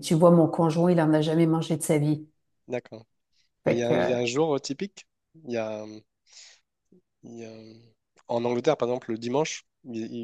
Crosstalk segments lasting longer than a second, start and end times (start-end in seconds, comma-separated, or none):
none